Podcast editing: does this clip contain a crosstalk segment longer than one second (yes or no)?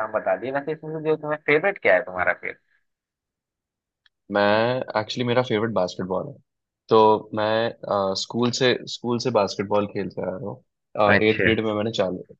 no